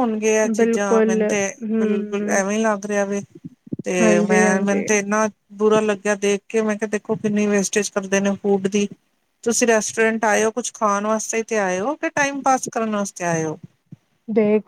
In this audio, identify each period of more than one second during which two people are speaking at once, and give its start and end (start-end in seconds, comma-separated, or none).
0.6-2.4